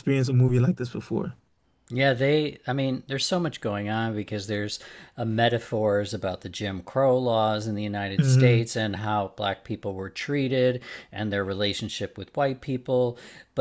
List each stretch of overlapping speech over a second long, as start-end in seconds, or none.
none